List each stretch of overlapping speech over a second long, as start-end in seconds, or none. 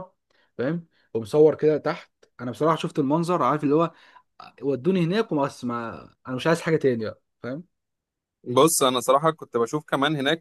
none